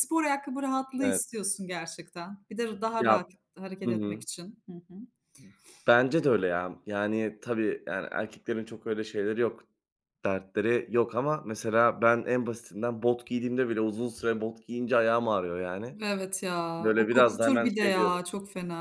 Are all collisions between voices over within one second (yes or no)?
no